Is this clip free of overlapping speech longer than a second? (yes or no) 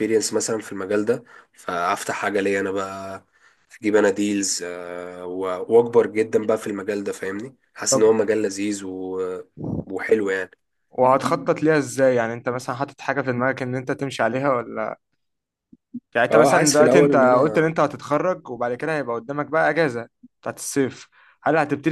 no